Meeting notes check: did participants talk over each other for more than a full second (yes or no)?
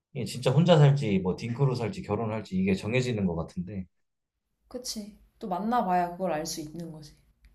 no